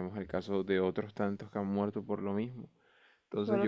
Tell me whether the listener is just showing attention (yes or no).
no